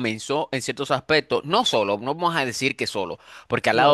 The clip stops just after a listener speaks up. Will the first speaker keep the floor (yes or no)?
yes